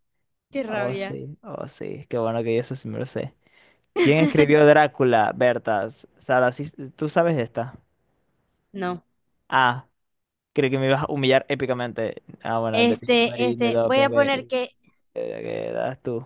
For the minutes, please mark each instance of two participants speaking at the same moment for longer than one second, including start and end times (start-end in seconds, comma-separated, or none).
12.7-14.5